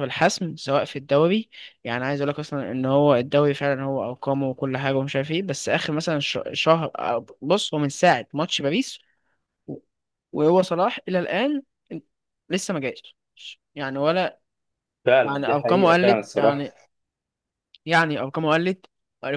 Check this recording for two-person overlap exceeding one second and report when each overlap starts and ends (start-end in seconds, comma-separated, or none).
15.2-16.6